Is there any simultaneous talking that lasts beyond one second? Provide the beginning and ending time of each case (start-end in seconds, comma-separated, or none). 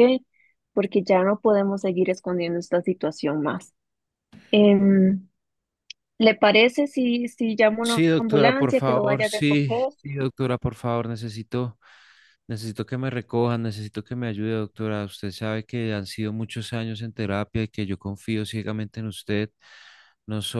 7.8-9.9